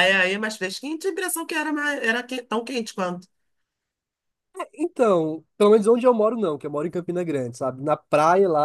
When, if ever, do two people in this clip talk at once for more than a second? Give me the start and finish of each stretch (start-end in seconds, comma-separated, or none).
none